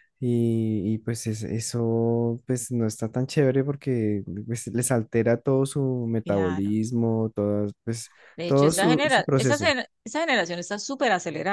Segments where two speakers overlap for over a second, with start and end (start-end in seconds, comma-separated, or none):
8.4-9.7